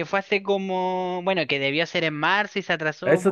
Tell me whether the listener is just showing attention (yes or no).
no